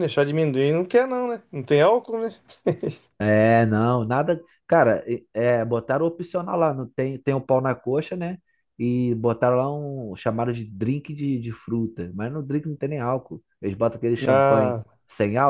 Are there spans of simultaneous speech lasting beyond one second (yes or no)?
no